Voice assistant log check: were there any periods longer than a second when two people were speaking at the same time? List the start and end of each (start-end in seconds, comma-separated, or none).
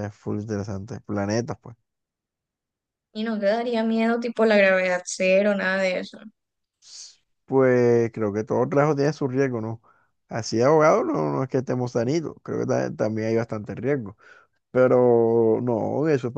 none